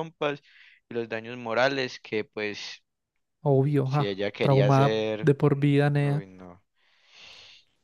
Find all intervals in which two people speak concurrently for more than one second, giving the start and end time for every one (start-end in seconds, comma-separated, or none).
3.8-5.3